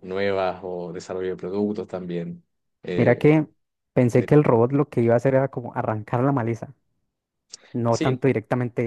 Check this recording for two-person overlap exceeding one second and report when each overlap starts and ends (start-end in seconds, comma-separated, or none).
none